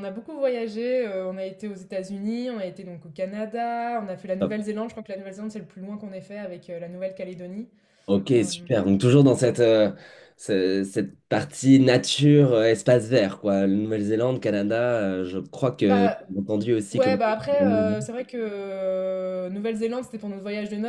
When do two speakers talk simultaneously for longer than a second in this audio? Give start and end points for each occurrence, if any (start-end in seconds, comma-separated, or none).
none